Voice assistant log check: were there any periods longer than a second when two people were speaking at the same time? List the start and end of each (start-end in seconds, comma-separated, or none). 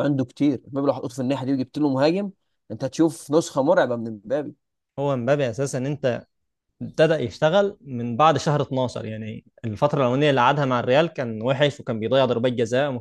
none